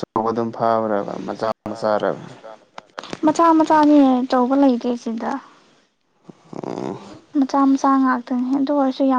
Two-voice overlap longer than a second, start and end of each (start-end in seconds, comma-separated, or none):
none